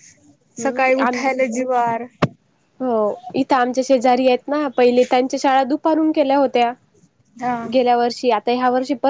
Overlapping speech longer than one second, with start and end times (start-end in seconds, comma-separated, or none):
0.6-2.0